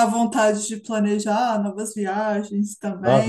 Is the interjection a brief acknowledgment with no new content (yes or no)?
no